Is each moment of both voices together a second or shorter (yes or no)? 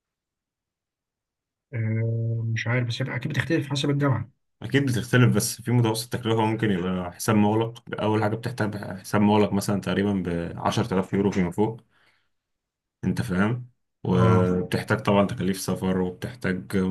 yes